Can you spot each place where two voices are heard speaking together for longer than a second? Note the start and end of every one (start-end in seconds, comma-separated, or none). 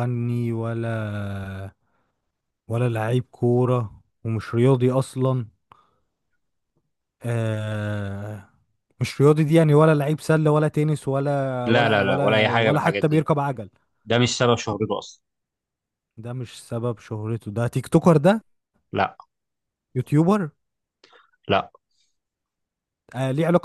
11.7-13.2